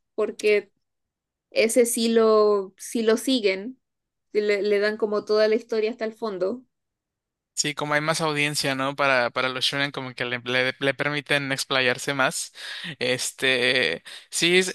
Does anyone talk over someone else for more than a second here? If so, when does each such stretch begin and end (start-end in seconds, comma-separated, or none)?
none